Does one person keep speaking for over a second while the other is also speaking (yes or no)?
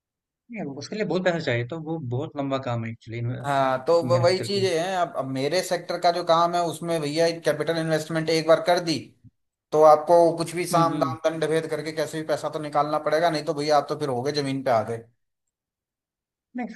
yes